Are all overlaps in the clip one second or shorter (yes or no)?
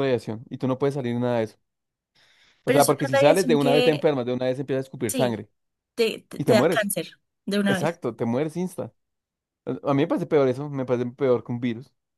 no